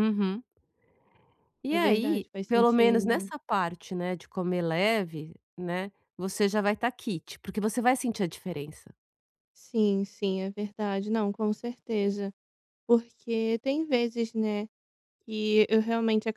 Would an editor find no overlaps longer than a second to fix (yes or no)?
no